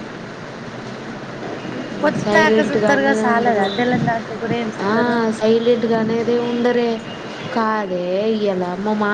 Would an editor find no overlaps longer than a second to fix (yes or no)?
no